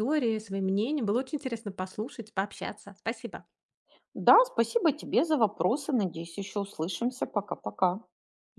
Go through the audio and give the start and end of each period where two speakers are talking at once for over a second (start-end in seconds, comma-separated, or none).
none